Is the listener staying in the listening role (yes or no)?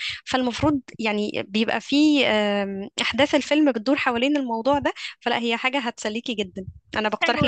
no